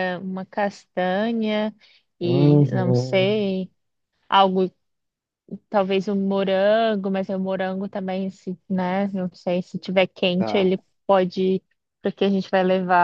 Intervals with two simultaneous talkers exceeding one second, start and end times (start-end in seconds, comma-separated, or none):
2.2-3.4